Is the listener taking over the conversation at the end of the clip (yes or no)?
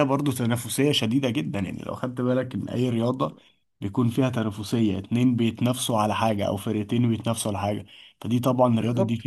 yes